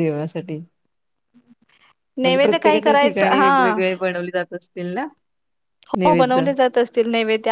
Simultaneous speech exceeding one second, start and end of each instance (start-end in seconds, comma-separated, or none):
2.2-3.7